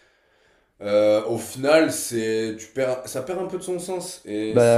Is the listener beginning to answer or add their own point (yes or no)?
no